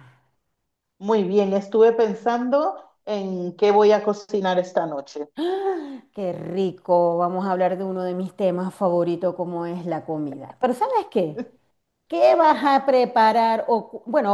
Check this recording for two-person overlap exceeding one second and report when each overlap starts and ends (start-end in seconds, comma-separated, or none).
none